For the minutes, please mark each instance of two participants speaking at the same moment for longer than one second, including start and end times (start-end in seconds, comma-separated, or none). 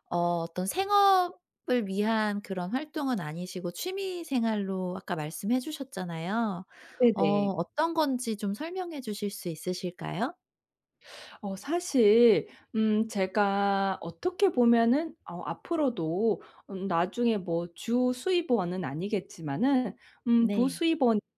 none